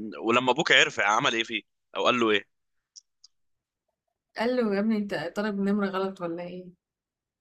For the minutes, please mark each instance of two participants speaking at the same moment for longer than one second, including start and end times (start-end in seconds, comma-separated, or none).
none